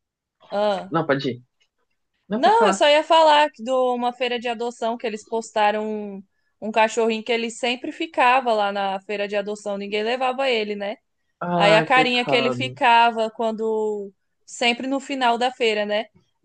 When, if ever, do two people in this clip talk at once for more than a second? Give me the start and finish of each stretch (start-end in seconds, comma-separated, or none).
11.6-12.8